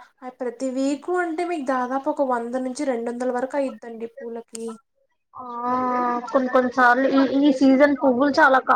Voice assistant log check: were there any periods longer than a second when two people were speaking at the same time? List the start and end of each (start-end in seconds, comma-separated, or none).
none